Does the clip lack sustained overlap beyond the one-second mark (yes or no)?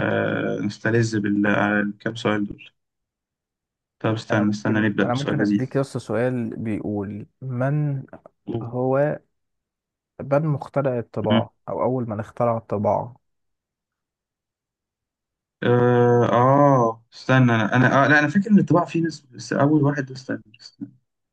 no